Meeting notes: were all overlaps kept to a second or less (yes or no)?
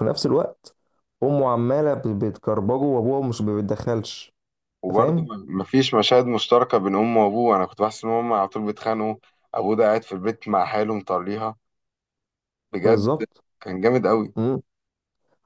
yes